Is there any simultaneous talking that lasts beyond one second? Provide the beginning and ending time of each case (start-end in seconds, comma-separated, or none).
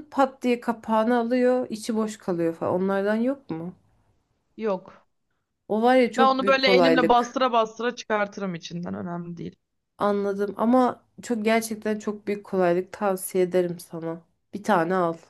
6.2-7.4